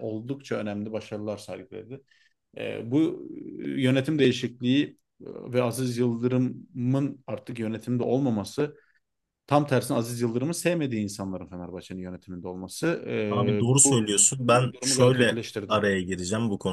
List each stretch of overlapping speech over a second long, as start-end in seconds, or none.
13.3-15.8